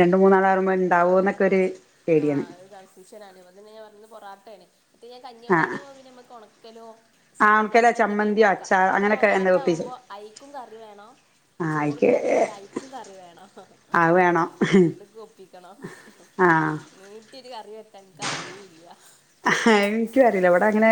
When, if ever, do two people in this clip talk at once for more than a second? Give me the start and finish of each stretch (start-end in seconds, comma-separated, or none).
7.5-9.9